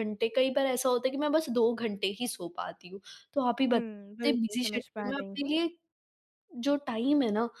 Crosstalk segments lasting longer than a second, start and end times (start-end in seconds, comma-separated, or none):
3.7-5.5